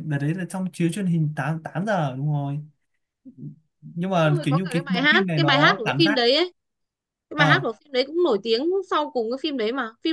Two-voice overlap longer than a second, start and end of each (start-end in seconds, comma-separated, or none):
4.2-6.2